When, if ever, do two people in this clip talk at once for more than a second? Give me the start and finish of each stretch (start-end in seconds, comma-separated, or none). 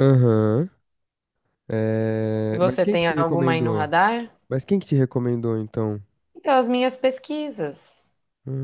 2.5-3.9